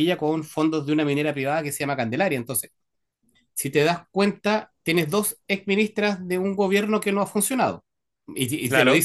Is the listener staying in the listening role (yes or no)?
yes